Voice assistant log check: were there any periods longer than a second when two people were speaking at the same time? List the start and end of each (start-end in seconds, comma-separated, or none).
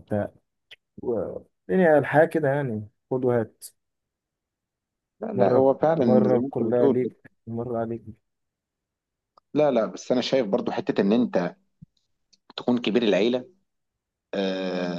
5.4-7.1